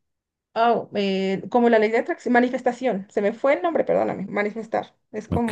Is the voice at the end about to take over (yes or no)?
no